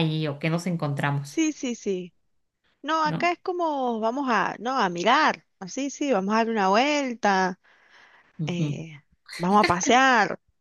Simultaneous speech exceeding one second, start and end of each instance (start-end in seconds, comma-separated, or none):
none